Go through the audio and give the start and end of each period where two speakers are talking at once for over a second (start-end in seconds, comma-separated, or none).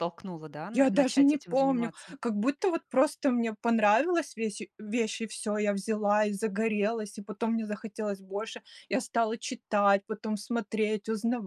0.7-2.1